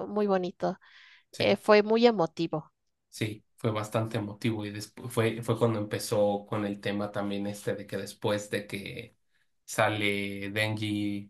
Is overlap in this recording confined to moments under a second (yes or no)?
yes